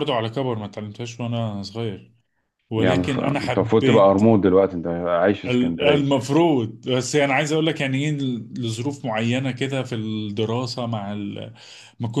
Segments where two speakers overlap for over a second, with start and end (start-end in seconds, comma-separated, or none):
2.8-4.2